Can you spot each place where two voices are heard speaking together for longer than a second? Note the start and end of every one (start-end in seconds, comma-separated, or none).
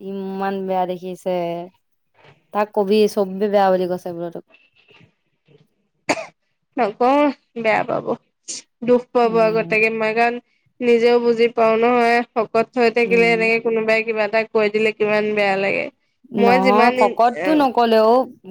16.5-17.9